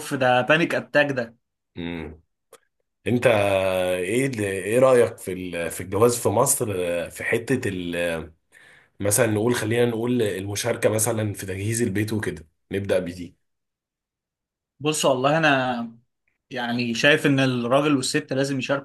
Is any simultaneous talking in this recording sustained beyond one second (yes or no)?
no